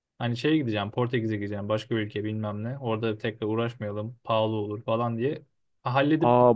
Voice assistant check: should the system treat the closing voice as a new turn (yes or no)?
yes